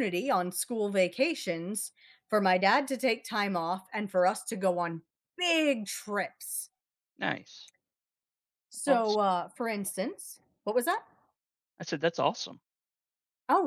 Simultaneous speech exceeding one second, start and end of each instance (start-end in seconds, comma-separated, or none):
none